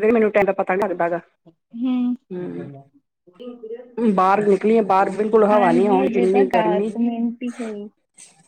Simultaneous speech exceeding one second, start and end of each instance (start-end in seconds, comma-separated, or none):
5.5-7.9